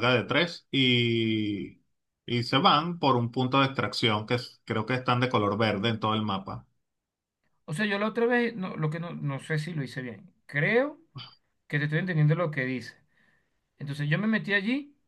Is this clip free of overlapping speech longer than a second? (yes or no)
yes